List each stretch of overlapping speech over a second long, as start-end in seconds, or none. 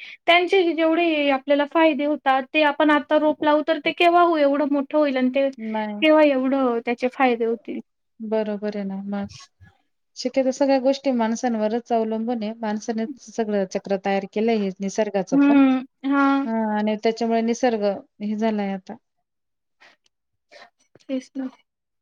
none